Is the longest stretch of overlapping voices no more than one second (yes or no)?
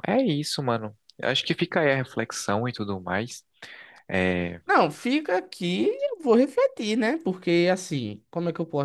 yes